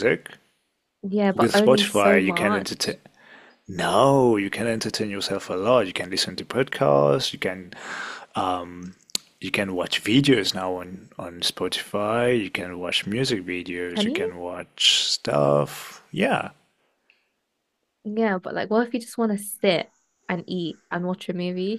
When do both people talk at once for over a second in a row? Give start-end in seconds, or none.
1.3-2.7